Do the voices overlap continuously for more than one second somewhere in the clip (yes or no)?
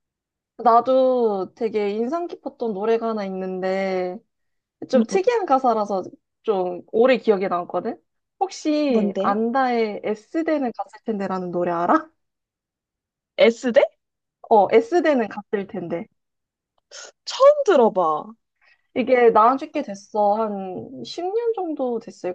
no